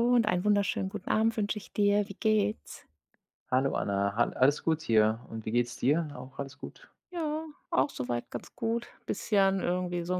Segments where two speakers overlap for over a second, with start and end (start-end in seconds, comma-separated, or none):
none